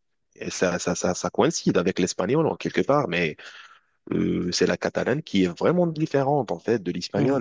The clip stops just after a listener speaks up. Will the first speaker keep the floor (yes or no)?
yes